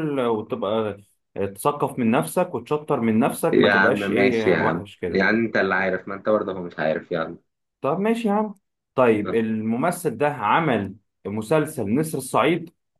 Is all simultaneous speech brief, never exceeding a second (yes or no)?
no